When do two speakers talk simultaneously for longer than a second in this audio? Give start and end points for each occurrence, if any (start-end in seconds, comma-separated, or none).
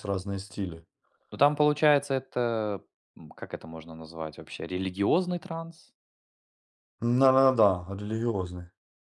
none